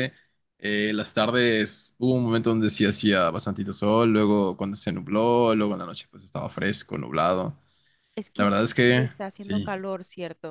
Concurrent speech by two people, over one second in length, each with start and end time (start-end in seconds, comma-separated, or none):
8.3-9.8